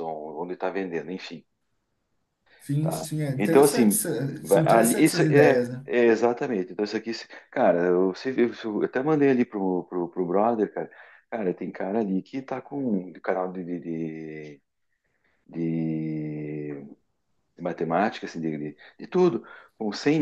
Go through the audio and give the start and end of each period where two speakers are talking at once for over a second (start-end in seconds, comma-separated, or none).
2.8-5.8